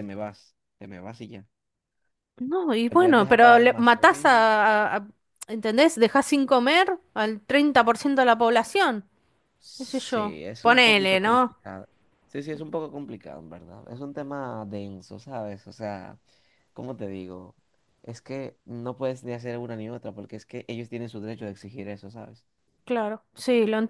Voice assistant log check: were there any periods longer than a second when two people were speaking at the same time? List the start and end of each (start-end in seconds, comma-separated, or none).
2.9-4.5, 9.8-11.6